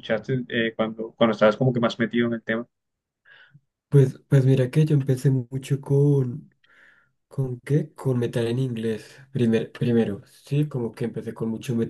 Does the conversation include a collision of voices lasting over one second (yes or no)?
no